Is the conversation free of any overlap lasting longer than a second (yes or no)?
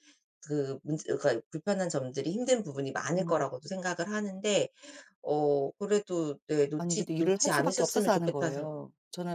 no